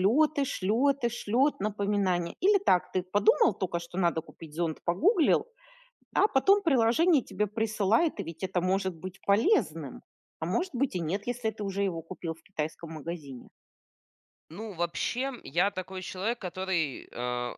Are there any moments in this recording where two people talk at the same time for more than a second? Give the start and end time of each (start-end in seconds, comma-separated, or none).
none